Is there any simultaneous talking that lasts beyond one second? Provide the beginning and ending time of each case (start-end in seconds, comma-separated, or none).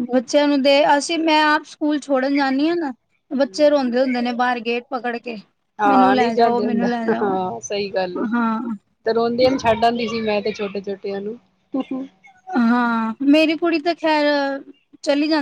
5.9-7.3